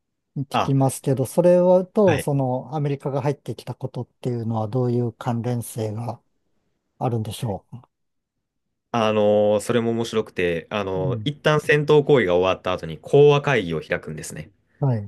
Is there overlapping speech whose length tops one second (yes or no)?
no